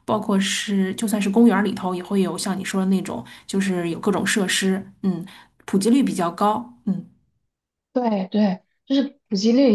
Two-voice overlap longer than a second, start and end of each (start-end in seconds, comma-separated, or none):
none